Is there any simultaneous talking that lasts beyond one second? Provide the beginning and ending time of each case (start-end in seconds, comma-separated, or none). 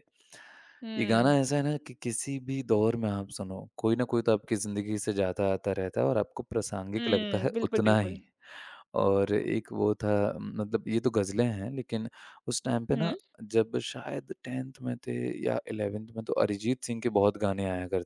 7.0-8.2